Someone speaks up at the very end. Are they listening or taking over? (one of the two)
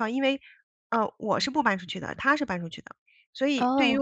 listening